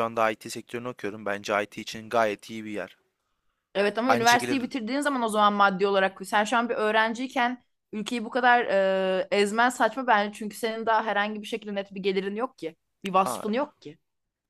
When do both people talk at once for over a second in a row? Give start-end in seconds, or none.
none